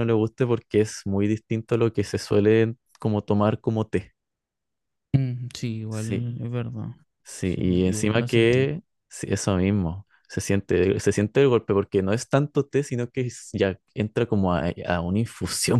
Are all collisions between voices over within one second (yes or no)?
no